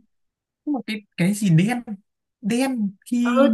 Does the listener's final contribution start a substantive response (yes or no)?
yes